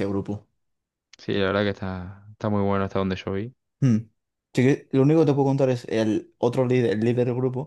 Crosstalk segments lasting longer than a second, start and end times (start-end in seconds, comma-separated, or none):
none